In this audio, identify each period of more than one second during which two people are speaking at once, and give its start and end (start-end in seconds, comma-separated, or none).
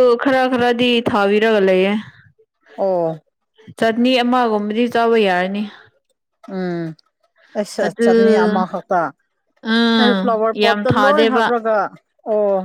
10.0-11.5